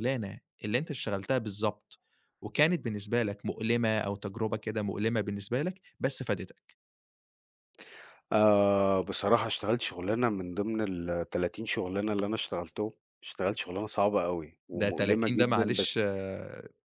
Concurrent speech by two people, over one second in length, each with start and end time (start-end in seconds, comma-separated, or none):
14.7-15.9